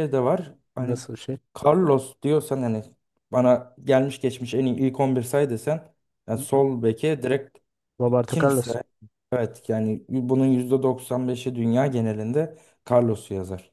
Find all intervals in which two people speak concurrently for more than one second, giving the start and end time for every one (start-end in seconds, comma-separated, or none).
none